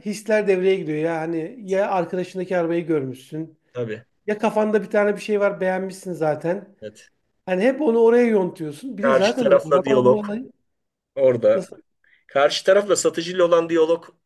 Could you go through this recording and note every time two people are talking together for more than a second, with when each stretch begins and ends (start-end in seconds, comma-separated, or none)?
9.0-10.2